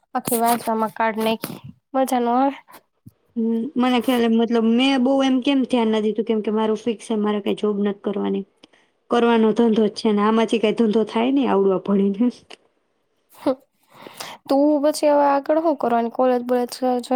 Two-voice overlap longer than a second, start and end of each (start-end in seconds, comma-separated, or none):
none